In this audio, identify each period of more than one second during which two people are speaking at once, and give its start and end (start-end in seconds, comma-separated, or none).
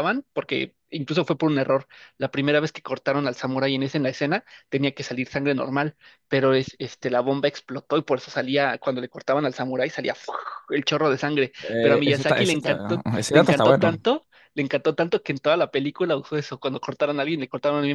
11.6-13.9